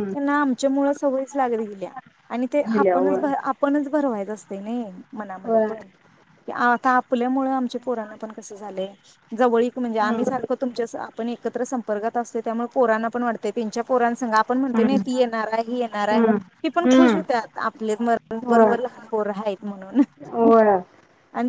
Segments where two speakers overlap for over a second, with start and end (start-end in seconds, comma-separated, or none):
none